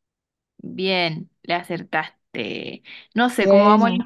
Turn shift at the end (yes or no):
no